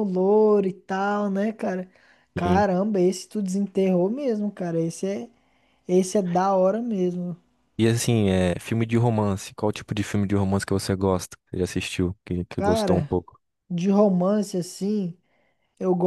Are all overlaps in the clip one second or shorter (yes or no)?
yes